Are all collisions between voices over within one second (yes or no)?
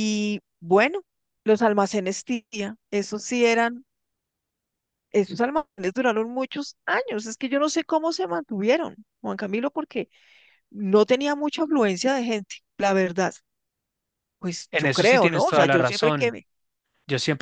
no